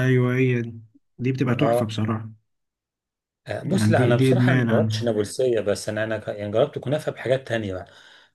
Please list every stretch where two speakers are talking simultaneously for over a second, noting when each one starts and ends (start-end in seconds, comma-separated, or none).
3.6-5.0